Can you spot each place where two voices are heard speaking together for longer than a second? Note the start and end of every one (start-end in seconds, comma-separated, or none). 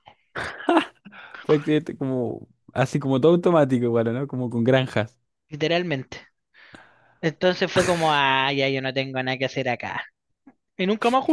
none